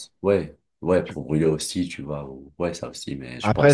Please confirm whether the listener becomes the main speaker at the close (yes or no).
yes